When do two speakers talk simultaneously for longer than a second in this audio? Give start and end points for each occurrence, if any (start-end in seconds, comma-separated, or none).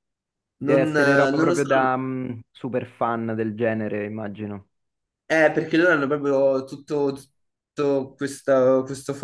0.6-1.9